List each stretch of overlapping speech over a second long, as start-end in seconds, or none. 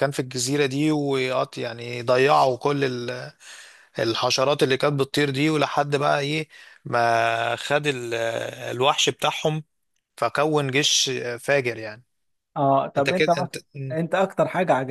none